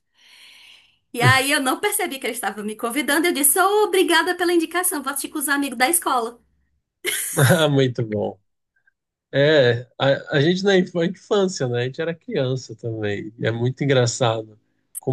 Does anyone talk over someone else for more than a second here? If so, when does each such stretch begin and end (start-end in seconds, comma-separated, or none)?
none